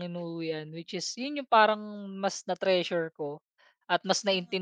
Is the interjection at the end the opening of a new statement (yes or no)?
no